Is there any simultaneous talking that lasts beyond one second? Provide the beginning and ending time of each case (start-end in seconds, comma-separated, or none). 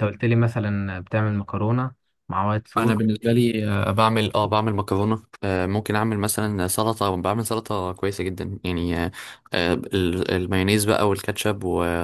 none